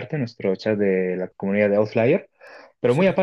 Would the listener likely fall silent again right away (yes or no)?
yes